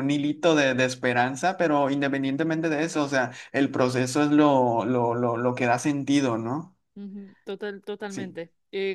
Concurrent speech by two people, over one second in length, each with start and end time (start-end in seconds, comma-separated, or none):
none